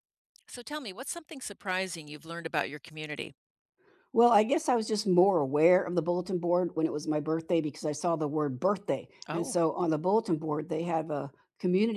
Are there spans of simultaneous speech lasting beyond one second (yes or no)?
no